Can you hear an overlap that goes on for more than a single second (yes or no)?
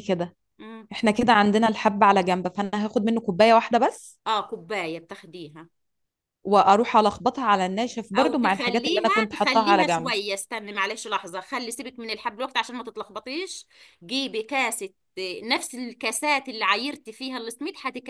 yes